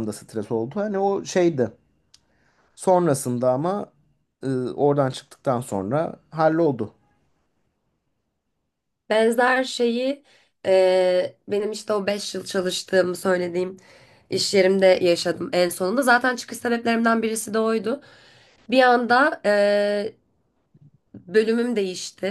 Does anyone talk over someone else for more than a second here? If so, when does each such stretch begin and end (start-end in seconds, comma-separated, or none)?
none